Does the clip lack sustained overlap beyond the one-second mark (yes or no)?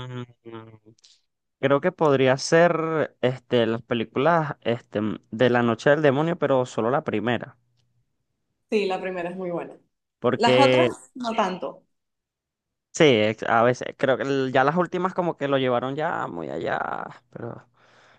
yes